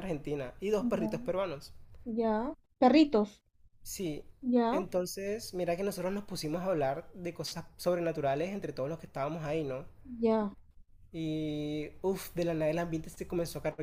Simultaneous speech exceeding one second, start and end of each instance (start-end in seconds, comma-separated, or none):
none